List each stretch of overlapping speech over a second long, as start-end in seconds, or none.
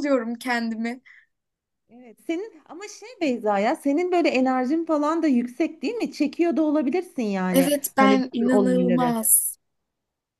7.5-9.1